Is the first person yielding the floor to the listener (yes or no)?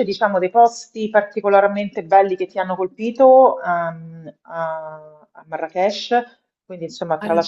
no